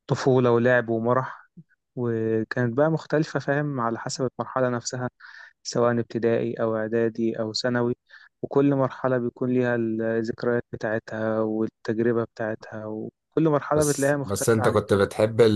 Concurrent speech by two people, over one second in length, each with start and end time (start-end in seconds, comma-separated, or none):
13.7-15.0